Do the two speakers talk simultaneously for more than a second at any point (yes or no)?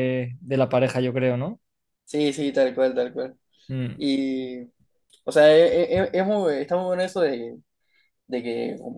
no